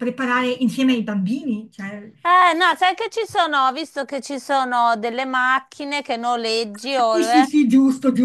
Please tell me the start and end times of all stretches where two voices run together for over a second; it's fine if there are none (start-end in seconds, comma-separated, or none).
none